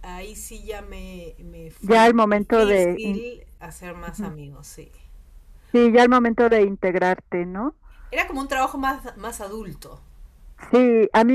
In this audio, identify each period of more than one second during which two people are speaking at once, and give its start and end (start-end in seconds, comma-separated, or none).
1.8-3.2